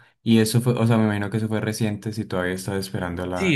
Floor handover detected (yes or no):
yes